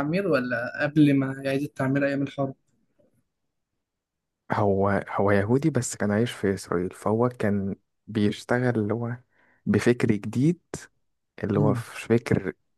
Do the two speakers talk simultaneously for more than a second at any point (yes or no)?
no